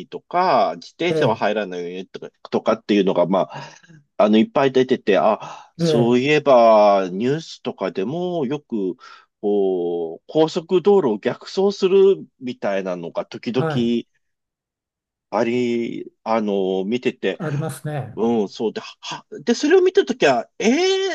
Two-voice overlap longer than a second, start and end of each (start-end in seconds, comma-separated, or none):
none